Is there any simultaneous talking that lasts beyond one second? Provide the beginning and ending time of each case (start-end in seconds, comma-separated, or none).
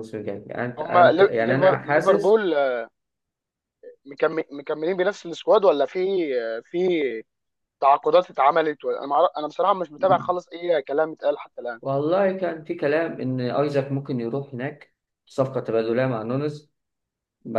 0.8-2.4